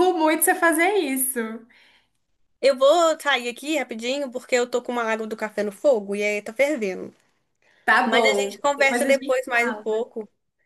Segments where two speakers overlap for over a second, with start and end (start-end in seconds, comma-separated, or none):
8.0-9.8